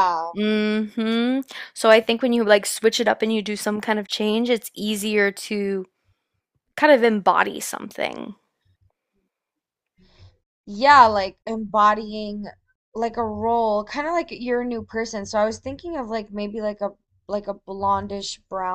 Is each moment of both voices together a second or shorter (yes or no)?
yes